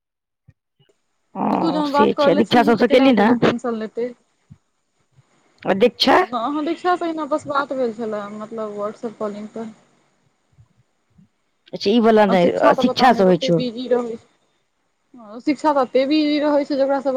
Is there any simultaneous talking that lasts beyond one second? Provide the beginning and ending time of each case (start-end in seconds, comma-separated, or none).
1.5-3.3